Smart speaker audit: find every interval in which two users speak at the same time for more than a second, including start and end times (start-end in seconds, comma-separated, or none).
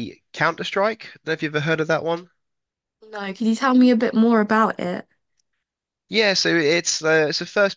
none